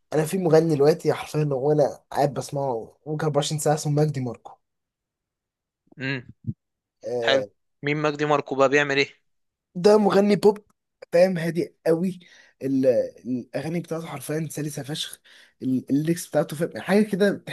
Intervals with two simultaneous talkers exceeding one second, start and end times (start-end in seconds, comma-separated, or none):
none